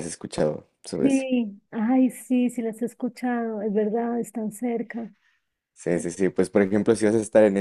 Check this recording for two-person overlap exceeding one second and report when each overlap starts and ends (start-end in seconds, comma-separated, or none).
none